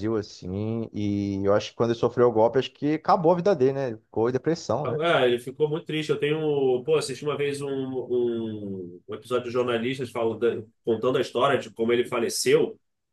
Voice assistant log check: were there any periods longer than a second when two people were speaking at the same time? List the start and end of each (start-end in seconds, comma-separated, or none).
none